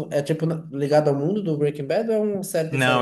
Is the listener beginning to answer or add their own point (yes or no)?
yes